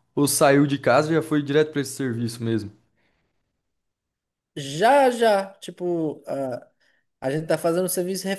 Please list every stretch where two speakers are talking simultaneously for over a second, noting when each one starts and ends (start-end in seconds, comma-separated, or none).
none